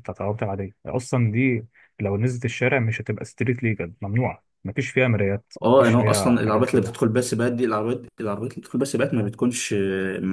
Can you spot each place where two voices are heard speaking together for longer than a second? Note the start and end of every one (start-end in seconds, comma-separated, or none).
5.6-7.0